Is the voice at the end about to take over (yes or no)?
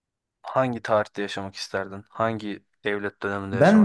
yes